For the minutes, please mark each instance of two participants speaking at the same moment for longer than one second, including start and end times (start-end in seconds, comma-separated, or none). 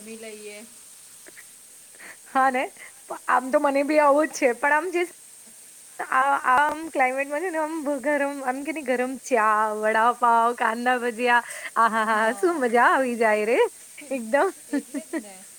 none